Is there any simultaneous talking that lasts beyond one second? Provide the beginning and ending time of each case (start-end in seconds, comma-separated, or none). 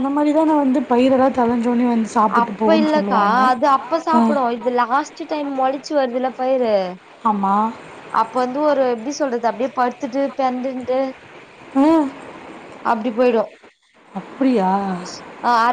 none